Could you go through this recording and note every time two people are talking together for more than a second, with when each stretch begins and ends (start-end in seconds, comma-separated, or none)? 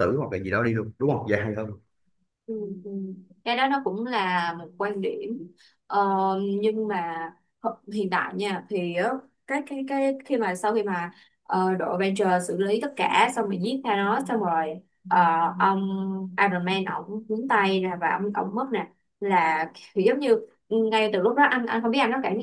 none